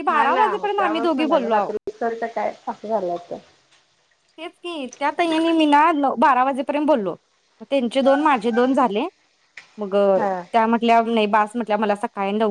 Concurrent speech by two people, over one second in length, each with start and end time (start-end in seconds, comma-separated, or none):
none